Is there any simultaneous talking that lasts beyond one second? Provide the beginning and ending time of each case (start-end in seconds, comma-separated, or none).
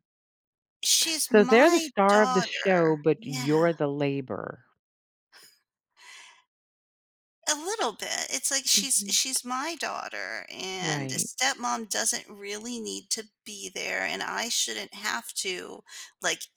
1.3-3.8